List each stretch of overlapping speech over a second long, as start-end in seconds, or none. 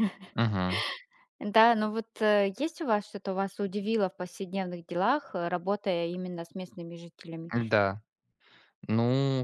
none